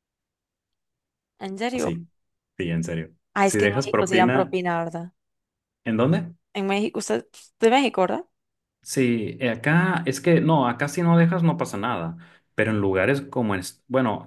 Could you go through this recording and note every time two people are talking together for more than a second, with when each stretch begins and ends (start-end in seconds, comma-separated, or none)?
3.3-4.5